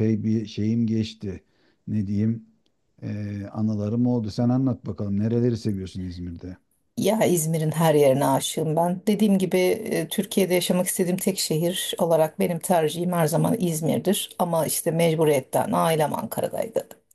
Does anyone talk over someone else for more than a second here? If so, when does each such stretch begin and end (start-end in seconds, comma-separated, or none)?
none